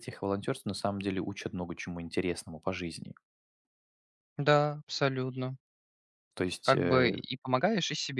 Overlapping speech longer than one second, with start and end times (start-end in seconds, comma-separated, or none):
none